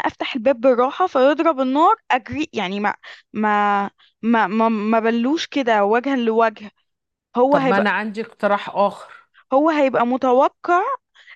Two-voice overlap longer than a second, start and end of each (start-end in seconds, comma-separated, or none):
none